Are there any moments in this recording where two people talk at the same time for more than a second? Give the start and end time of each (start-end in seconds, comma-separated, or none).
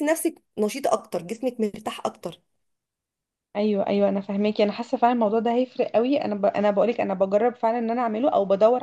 none